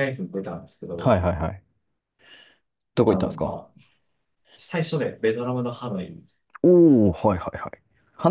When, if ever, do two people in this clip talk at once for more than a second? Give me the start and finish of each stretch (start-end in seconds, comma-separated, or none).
none